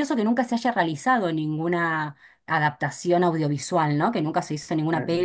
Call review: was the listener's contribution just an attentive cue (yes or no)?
yes